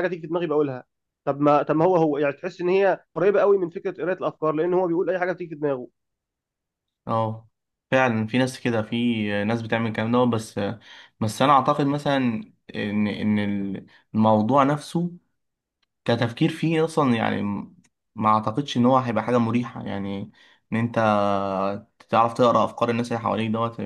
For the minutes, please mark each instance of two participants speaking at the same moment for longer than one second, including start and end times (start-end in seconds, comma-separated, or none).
none